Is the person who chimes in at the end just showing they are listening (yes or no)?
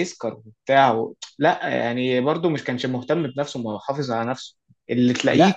no